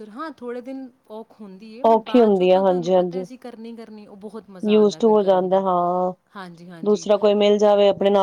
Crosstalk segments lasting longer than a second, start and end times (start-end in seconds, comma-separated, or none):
1.9-3.2